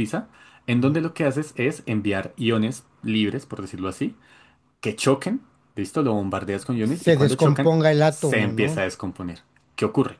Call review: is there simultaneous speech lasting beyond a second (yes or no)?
yes